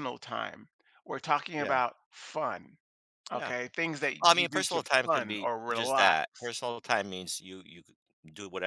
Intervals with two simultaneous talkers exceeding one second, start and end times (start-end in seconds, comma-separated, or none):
4.2-6.2